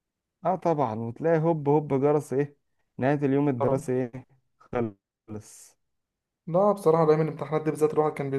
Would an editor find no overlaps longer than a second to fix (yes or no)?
yes